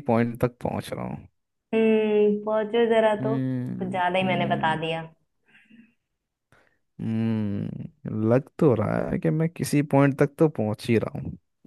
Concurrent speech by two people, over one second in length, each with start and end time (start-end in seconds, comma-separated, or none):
3.1-4.8